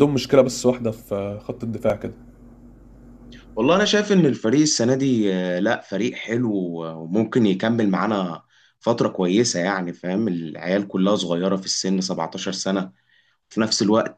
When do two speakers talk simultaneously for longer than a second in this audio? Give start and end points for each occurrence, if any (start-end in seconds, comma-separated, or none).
none